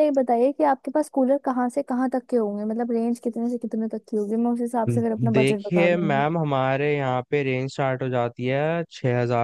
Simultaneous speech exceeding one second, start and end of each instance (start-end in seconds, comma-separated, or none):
4.9-6.2